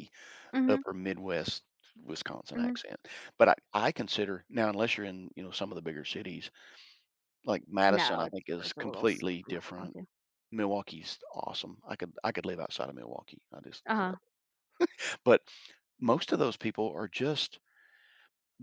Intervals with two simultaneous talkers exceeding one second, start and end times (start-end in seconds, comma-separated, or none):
7.9-10.0